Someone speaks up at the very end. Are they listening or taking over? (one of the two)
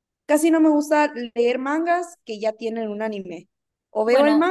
listening